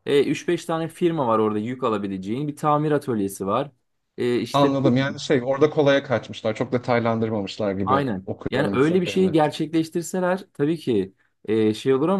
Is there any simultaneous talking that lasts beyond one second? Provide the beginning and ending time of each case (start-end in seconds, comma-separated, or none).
7.8-9.3